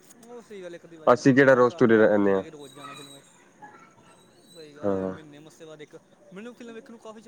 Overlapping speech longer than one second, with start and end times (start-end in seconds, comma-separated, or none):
1.1-2.4